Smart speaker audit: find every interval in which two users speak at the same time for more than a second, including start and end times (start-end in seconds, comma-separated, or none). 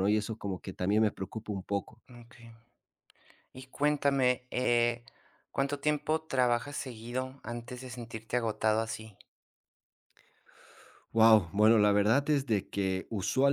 none